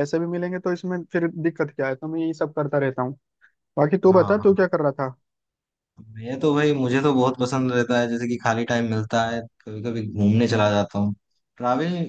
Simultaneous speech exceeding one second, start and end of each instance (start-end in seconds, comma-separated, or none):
none